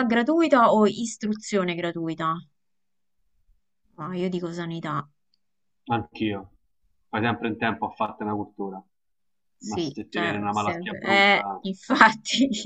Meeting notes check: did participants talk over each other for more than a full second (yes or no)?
yes